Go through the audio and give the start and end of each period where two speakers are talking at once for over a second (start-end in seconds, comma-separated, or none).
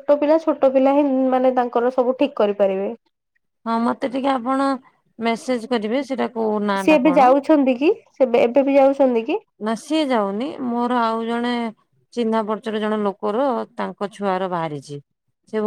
none